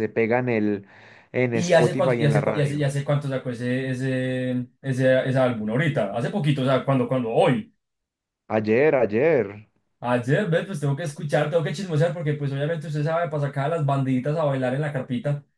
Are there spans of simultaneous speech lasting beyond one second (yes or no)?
yes